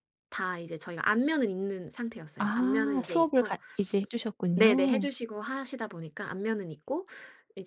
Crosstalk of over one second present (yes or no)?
yes